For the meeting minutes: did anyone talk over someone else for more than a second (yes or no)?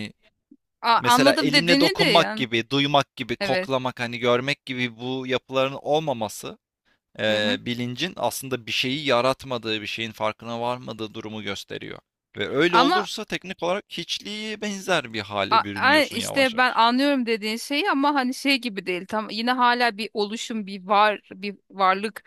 yes